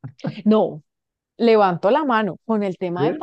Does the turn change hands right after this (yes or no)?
no